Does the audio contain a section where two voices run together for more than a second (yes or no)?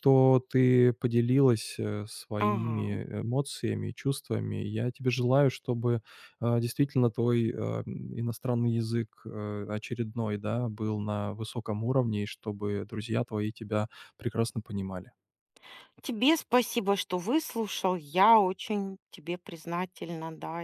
no